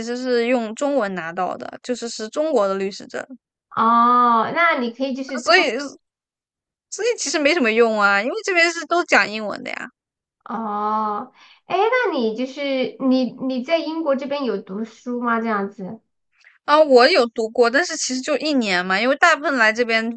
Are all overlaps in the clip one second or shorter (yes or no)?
yes